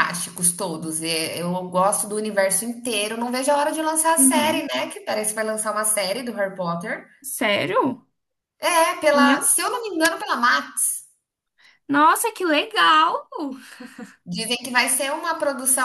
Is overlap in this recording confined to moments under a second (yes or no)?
yes